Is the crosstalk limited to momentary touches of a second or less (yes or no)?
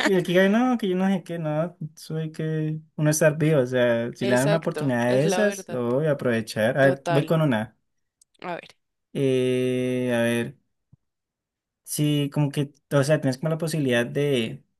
no